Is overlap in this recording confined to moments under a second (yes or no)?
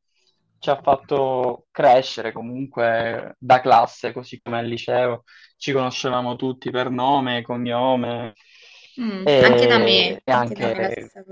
no